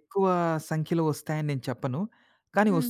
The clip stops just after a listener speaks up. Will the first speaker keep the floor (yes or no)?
yes